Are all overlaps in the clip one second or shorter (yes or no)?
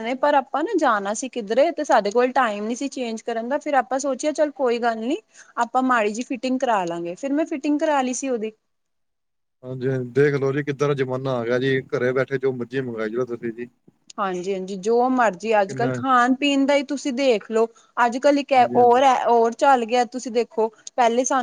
yes